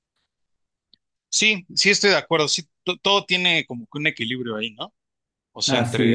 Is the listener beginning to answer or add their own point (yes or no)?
no